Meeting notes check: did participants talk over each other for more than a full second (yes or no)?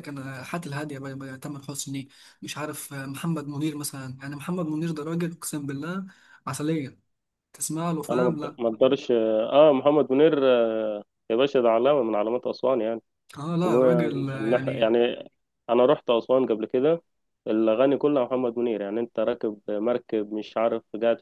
yes